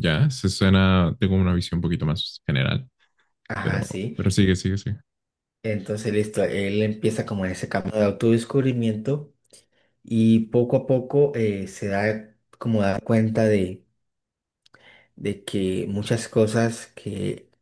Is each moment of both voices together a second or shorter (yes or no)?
yes